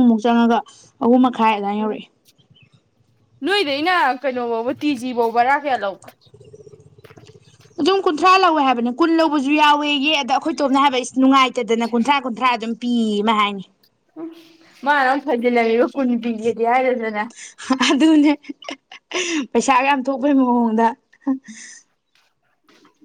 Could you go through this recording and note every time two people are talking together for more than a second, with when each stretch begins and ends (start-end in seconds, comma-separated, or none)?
none